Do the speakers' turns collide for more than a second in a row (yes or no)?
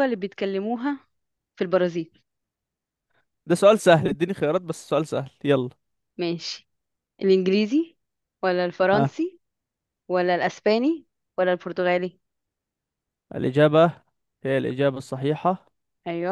no